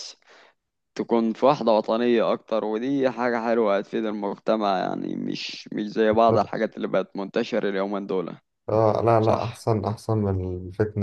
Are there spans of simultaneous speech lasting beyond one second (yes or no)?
no